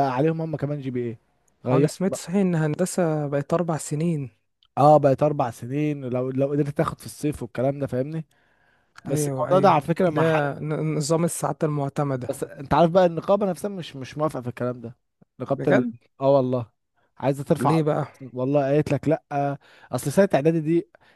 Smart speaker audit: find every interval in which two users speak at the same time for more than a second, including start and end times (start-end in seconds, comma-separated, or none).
9.1-10.4